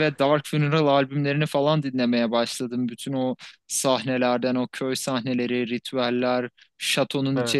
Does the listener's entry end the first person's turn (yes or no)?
no